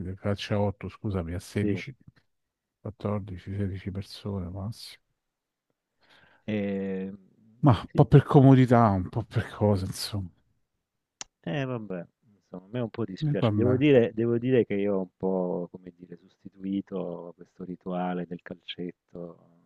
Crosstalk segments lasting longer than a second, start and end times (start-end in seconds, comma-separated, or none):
none